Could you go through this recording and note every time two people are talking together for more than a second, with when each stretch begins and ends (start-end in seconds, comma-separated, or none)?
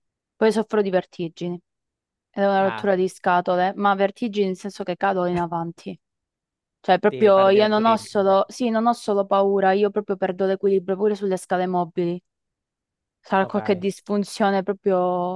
7.1-8.4